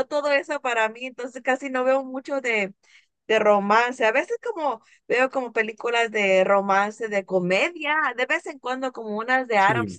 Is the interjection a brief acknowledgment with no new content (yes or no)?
yes